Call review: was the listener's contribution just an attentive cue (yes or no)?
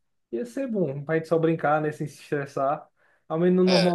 yes